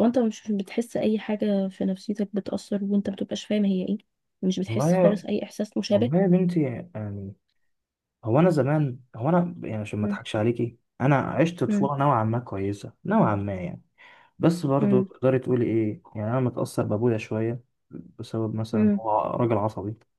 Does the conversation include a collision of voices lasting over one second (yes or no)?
no